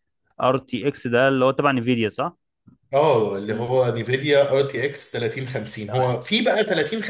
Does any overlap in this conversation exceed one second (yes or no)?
no